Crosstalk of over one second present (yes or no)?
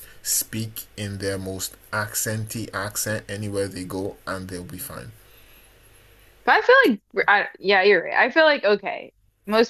no